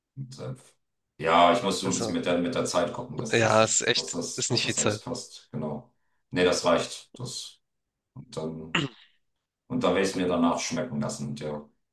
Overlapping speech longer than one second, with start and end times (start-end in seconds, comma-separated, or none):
3.3-5.0